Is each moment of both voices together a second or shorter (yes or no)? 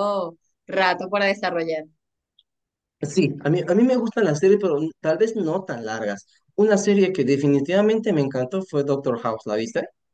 yes